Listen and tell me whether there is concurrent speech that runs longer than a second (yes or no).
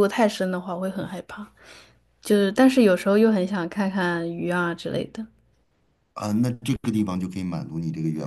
no